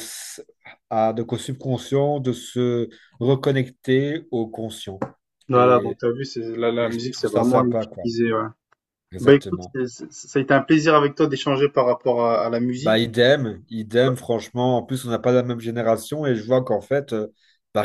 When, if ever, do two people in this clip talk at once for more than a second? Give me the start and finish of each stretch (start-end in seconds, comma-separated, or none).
6.8-8.0